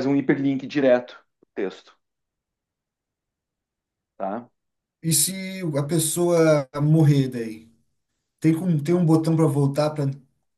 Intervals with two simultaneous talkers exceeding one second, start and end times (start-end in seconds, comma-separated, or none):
none